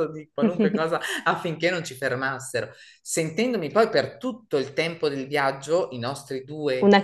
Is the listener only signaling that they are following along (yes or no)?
yes